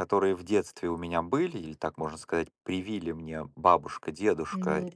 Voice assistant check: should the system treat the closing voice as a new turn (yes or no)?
no